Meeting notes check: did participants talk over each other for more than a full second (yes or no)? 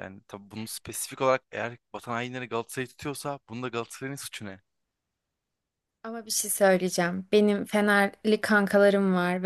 no